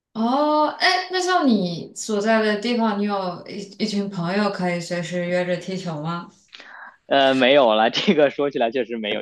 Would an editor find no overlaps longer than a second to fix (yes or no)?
yes